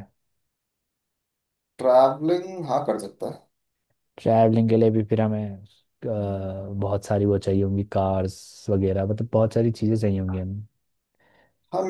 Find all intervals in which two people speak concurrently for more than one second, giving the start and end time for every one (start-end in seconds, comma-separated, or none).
none